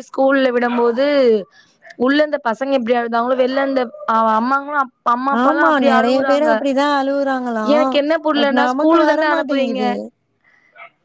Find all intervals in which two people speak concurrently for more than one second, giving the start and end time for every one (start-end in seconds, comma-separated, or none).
8.4-9.8